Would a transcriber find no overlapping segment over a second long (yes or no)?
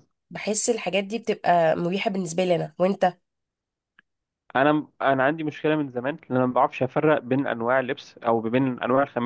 yes